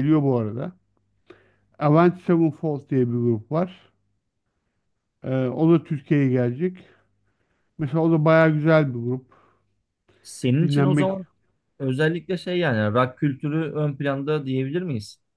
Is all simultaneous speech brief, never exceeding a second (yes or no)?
yes